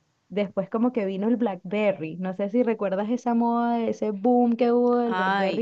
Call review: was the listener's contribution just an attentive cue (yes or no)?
no